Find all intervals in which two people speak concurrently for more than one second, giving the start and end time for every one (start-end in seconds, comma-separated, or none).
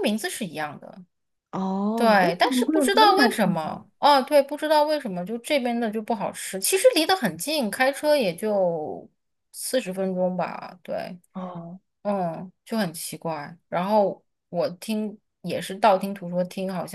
1.9-3.8